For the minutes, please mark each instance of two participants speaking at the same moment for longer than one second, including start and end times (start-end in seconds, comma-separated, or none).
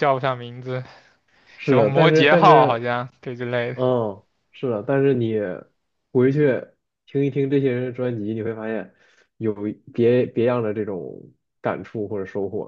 1.6-2.9